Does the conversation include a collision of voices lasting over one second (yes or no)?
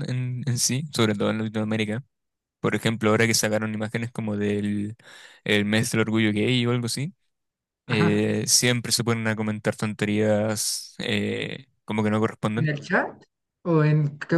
no